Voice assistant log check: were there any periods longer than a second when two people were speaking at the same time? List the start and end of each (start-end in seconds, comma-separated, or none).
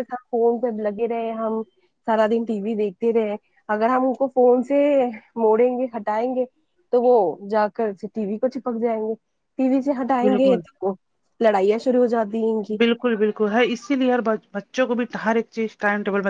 none